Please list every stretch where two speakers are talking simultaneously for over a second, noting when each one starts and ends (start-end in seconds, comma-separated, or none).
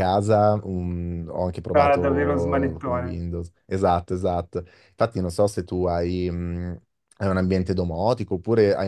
1.7-3.3